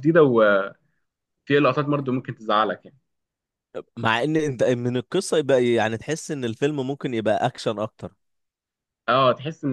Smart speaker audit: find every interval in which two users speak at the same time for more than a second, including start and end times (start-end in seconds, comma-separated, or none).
none